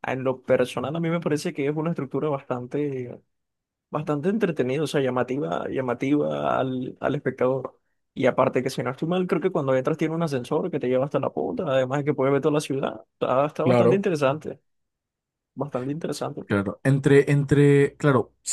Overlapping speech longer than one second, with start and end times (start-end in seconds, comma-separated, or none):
none